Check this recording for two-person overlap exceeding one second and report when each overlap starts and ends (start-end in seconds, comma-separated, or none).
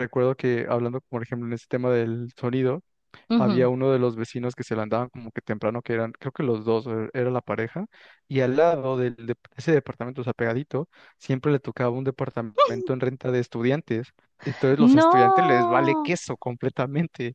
14.8-16.1